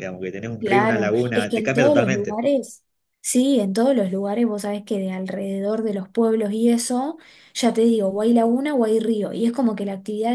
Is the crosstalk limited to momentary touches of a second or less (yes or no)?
no